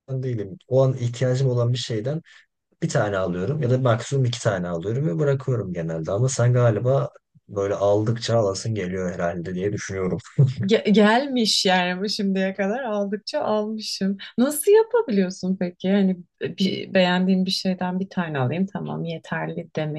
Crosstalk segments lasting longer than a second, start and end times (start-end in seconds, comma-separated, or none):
none